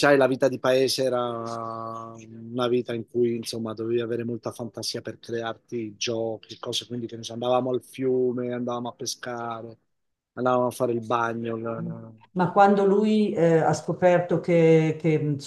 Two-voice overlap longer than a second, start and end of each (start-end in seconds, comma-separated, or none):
none